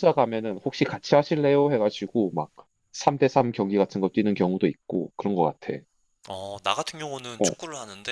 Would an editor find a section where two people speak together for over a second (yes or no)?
no